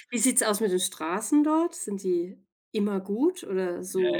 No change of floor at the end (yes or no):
no